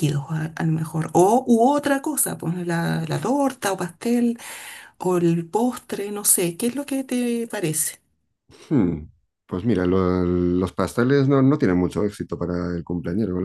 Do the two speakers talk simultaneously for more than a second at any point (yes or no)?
no